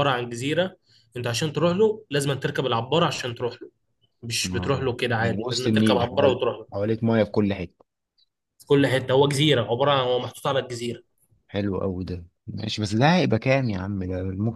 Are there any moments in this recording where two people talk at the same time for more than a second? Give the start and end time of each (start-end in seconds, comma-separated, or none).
4.5-6.7